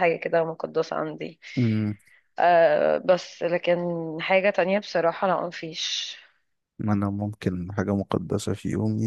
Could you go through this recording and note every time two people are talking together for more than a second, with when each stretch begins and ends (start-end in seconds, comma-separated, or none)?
none